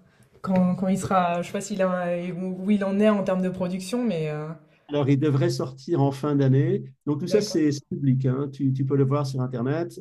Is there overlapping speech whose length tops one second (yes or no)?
no